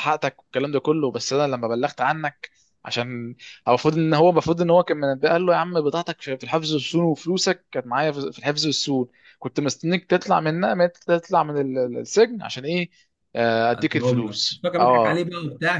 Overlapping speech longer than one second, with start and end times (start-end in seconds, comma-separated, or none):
13.8-15.2